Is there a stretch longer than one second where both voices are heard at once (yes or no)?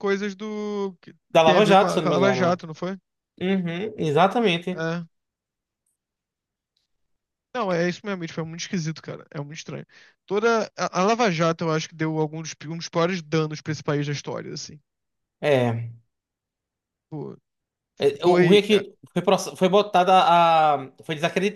yes